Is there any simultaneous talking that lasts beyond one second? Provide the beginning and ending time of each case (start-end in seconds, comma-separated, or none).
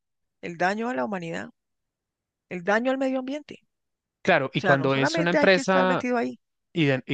4.5-6.1